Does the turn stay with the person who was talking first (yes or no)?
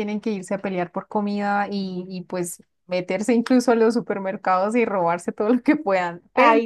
yes